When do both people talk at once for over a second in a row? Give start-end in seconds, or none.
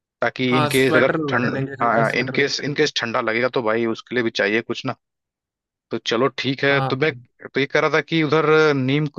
0.5-2.4